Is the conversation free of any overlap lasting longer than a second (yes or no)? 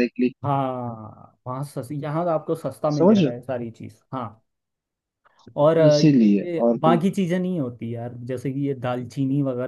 no